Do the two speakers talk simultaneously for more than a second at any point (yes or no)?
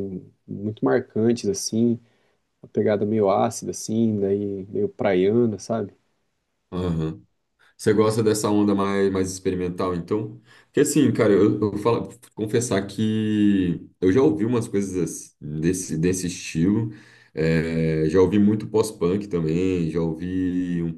no